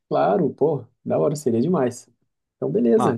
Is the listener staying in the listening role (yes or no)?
yes